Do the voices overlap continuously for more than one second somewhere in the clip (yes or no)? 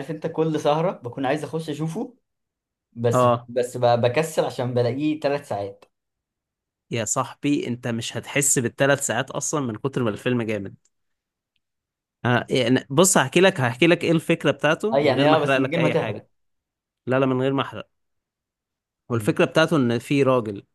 yes